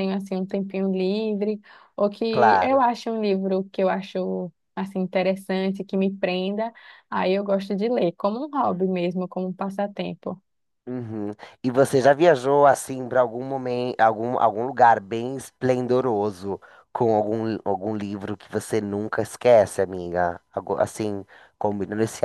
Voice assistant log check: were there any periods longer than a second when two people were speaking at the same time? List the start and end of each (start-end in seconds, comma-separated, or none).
none